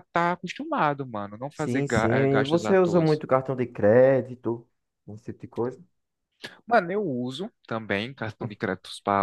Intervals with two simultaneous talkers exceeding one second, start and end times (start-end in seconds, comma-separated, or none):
1.5-3.0